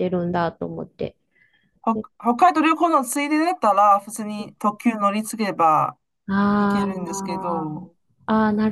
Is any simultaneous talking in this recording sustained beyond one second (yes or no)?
yes